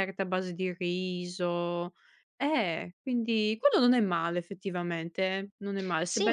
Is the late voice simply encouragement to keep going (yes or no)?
no